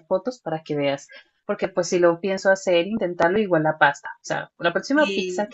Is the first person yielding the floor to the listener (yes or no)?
no